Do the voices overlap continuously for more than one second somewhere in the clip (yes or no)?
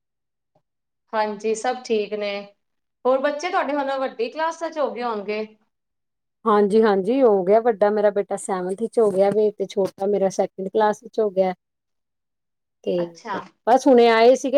no